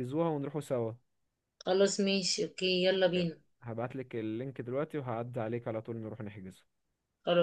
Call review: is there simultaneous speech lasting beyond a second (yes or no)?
no